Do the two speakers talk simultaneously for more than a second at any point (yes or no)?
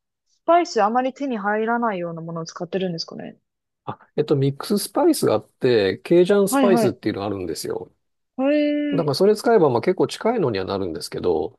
no